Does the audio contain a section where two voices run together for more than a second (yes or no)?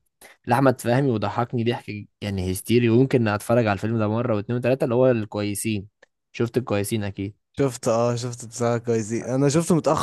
no